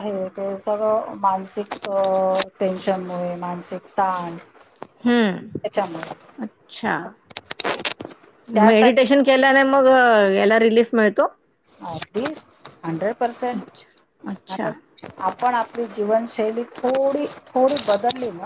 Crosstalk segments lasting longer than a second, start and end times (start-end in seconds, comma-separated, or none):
none